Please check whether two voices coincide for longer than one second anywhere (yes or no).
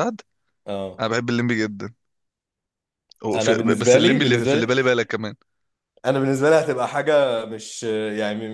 yes